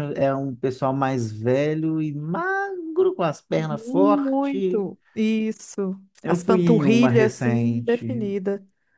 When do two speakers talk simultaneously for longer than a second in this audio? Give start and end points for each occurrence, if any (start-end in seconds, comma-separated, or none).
3.6-4.8, 6.2-8.3